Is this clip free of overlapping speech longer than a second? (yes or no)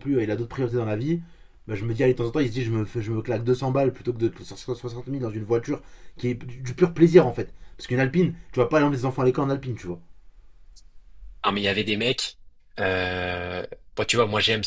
yes